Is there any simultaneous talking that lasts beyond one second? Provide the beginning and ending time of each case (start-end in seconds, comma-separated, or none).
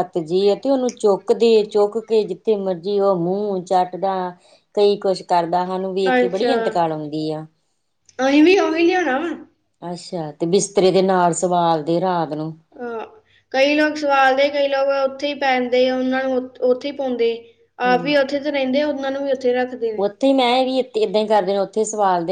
none